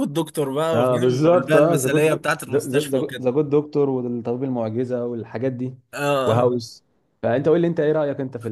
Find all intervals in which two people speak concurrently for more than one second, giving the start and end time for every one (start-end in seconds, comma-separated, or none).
0.7-2.2